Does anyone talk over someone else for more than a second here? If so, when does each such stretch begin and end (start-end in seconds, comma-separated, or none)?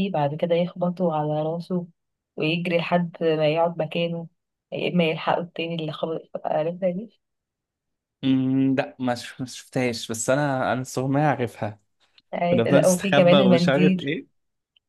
12.5-14.1